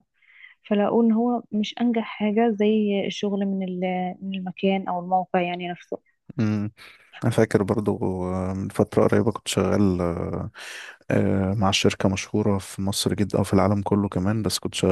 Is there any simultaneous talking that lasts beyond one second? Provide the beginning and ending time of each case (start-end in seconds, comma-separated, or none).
none